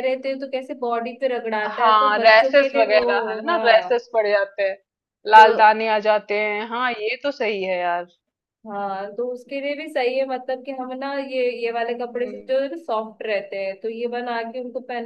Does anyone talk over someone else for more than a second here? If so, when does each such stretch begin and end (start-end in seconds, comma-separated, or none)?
1.8-4.0